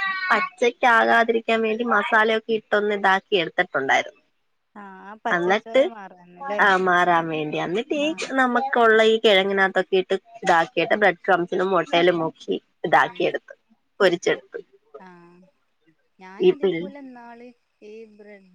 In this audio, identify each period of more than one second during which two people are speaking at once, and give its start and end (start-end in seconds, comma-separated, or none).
none